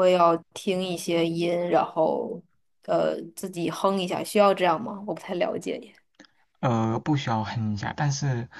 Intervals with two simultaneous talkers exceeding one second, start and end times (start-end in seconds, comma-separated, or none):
none